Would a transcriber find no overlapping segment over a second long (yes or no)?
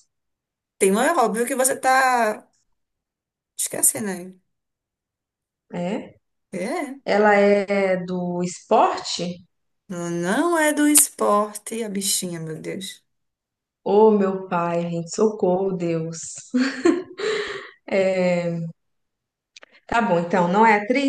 yes